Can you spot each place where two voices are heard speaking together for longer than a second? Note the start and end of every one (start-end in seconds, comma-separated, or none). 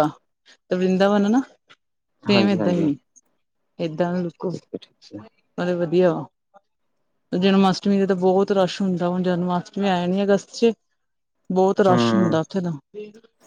none